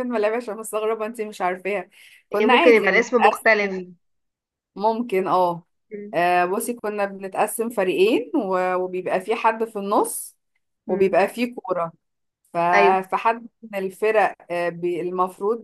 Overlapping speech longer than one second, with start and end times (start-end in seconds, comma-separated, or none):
2.3-3.8